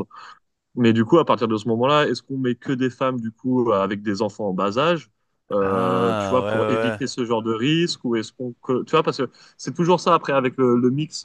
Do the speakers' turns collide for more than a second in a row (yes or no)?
yes